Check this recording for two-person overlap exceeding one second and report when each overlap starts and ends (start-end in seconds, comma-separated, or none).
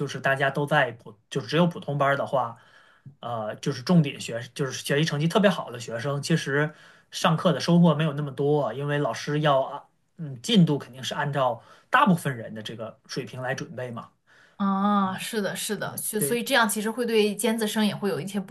none